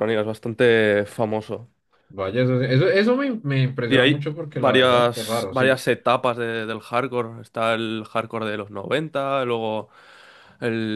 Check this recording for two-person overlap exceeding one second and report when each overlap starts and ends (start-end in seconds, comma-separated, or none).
3.9-5.8